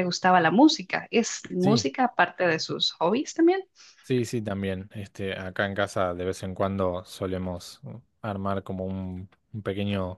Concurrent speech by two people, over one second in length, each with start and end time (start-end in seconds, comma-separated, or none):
none